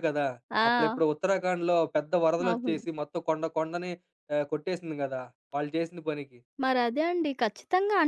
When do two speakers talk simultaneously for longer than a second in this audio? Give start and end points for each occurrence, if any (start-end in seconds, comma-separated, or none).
none